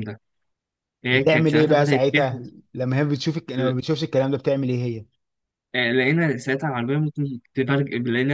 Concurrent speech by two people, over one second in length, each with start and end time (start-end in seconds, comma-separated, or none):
1.1-2.4